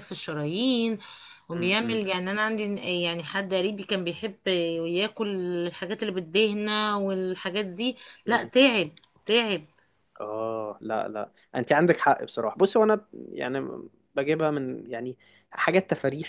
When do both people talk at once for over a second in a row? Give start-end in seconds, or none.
none